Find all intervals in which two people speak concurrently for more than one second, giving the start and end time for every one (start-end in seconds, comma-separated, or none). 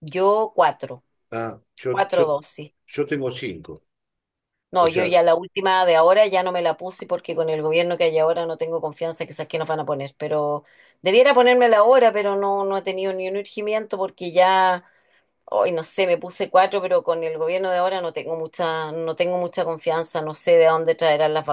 none